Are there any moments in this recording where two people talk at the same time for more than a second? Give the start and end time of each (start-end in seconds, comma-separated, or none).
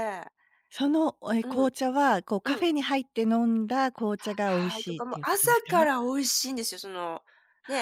4.4-5.9